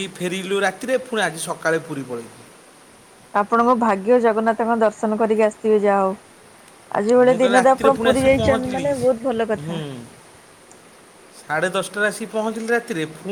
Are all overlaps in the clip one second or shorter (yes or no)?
no